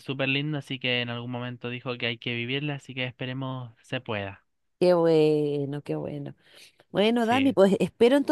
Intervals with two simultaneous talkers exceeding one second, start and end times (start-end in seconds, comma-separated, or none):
none